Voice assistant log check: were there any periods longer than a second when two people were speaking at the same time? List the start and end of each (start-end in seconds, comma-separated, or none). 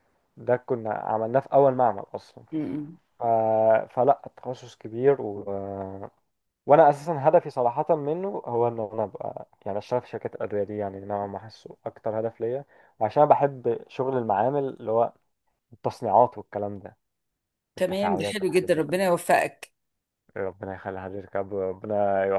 17.8-19.1